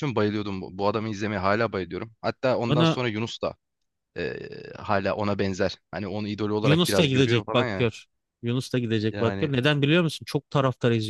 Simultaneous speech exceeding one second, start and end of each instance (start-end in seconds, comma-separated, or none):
6.6-7.9